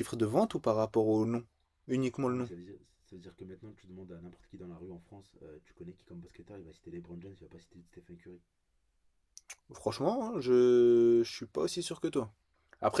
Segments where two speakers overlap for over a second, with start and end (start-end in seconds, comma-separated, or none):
none